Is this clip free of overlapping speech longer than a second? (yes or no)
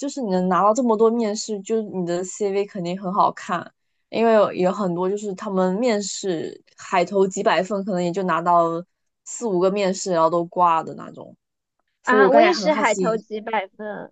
no